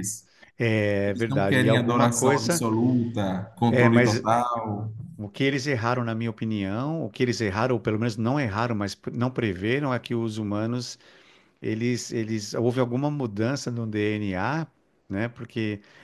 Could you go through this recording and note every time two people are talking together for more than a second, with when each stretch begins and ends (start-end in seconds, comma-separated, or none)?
1.1-2.7